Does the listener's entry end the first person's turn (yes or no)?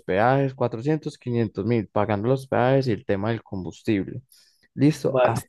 no